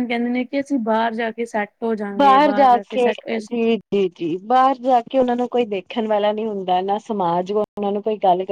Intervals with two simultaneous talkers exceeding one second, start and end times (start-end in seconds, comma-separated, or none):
none